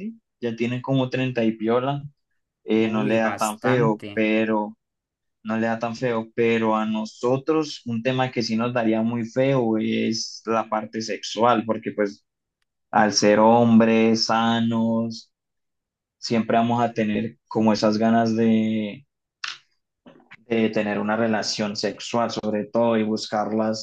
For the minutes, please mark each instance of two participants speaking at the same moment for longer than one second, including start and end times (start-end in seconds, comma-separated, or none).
2.8-4.3